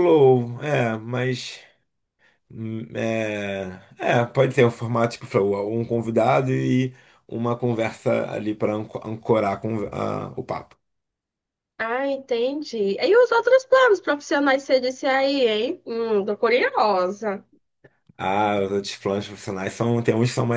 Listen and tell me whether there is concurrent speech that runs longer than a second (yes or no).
no